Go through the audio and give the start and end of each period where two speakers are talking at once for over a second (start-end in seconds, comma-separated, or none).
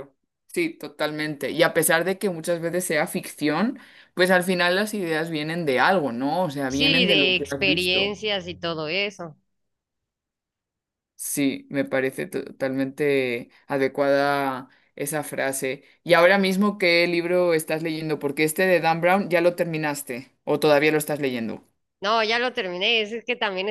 6.7-8.2